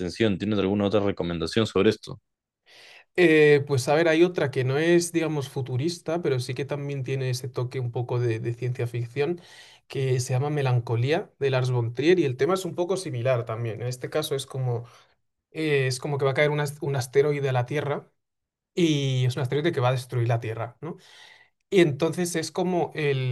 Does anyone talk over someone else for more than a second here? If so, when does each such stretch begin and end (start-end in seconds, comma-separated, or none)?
none